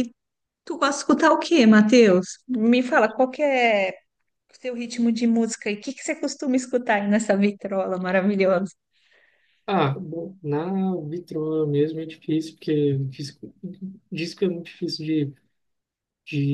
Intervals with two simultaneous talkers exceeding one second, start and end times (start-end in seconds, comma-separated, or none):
none